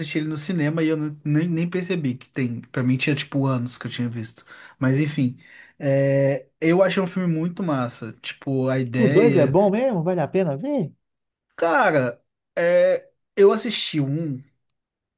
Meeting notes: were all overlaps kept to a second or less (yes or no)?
yes